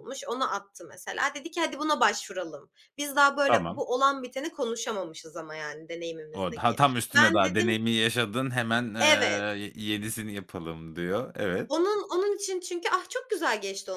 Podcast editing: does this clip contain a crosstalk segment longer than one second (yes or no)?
yes